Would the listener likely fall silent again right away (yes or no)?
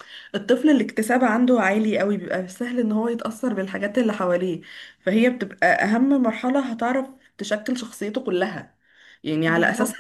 yes